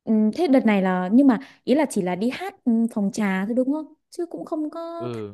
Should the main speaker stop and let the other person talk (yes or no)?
yes